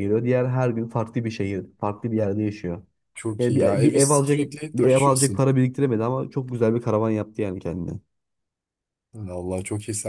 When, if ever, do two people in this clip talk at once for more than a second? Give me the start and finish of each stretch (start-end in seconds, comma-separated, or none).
3.4-5.5